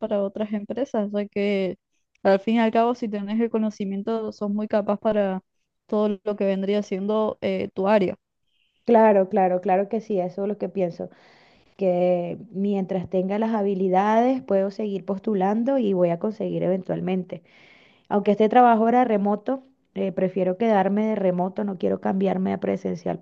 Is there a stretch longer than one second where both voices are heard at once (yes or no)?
no